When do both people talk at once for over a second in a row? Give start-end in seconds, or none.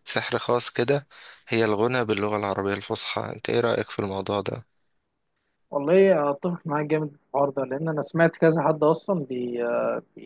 none